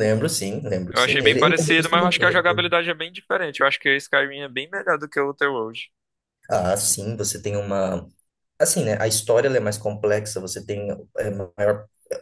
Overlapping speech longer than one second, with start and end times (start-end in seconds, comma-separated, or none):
0.9-2.4